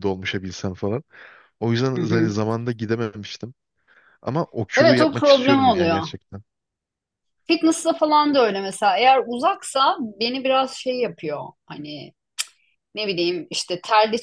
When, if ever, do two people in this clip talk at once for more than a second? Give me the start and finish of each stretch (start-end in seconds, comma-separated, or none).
4.8-6.0